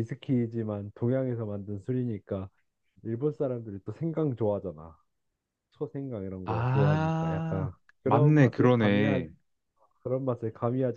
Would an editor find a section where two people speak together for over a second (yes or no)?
yes